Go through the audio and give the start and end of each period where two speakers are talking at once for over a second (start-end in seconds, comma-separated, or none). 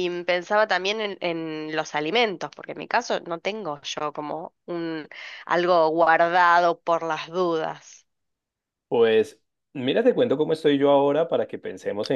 none